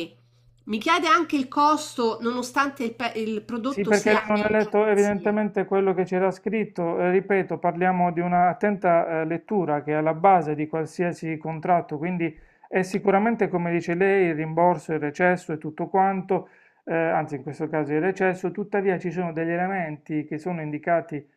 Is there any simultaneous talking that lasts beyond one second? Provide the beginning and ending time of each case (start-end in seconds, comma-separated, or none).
3.7-5.4